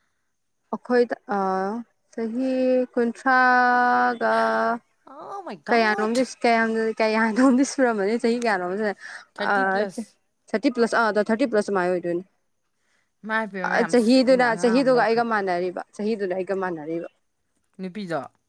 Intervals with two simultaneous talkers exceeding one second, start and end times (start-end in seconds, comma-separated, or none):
13.9-15.4